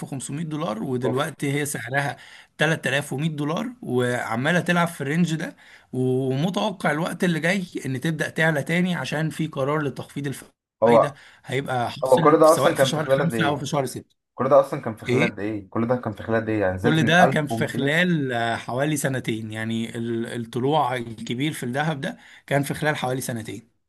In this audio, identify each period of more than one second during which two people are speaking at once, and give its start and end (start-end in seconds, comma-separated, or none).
12.0-13.7, 16.8-18.0